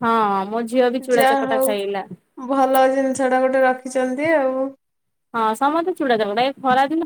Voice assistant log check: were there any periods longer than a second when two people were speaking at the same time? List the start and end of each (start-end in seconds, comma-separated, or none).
none